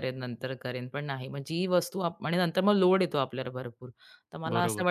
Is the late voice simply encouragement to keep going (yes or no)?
yes